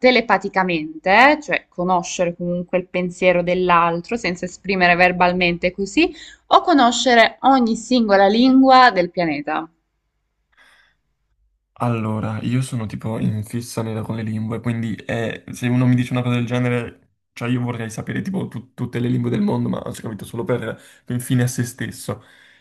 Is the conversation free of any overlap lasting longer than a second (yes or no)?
yes